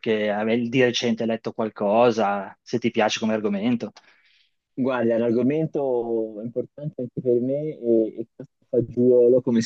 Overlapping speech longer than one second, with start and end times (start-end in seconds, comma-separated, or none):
none